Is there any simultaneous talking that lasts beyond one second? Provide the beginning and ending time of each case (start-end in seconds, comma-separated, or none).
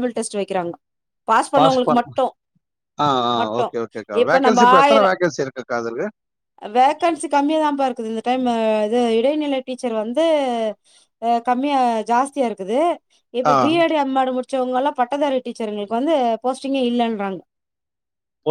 none